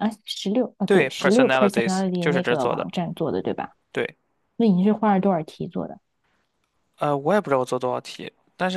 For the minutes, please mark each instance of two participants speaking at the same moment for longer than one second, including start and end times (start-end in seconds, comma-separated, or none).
0.8-2.9